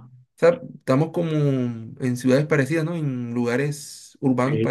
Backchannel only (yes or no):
no